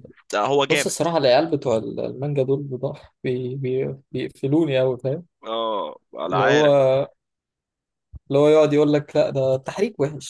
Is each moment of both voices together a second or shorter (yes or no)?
yes